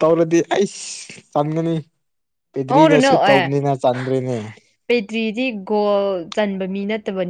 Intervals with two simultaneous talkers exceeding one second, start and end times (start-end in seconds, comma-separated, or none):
none